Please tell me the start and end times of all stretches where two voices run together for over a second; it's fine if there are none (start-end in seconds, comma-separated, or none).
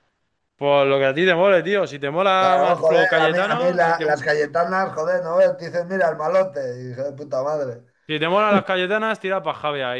2.4-4.0